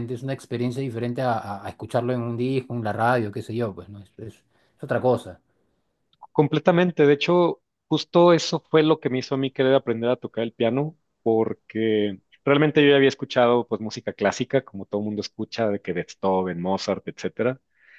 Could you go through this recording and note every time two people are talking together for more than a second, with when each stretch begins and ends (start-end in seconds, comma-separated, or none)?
none